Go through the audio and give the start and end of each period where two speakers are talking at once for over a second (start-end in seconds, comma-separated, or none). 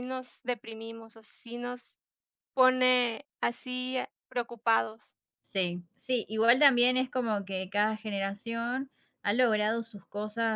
none